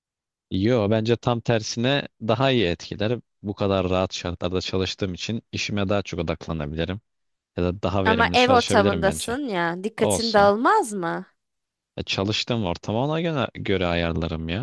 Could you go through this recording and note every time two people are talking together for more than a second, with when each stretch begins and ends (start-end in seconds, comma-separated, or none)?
8.1-9.4